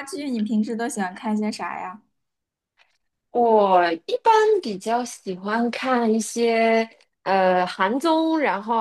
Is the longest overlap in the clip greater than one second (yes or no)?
no